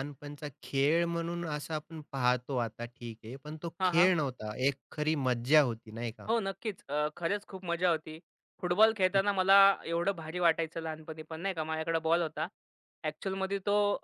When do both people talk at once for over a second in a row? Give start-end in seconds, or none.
none